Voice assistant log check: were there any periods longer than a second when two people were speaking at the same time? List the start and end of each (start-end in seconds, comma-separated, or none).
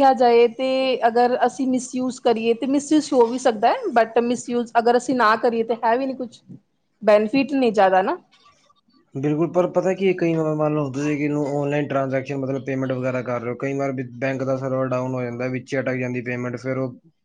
none